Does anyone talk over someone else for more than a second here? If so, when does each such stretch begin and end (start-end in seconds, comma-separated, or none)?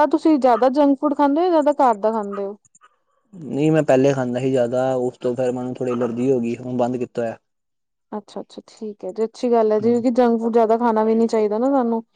none